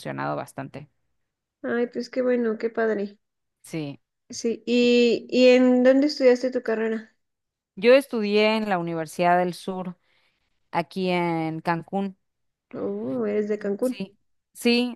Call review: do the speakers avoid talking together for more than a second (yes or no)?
yes